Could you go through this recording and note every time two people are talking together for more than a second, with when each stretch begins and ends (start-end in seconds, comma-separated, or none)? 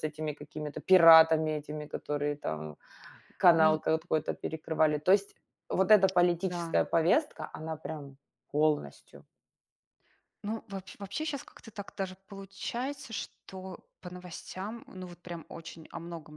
none